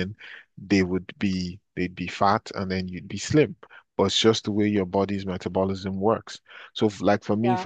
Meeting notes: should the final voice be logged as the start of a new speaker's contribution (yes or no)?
no